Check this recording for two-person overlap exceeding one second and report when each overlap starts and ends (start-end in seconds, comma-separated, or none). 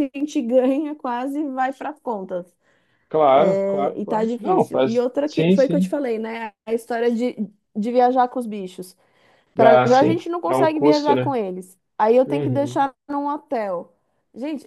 3.5-5.9, 9.6-11.3